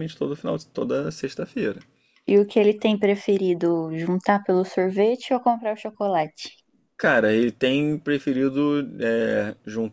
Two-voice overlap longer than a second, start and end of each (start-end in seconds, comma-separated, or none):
none